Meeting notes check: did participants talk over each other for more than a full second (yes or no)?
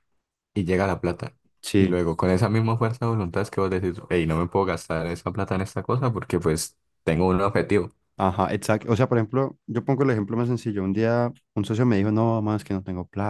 no